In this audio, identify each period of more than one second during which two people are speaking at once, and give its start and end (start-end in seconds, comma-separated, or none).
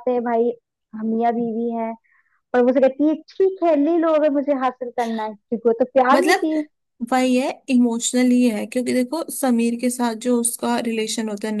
none